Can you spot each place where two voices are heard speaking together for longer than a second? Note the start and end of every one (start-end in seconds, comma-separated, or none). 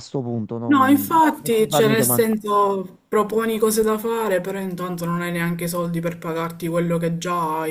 0.7-2.2